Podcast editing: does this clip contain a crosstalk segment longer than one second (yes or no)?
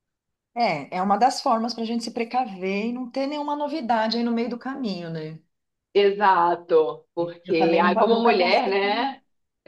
yes